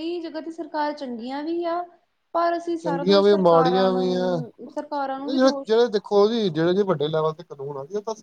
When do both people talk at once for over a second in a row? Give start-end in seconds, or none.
2.8-4.3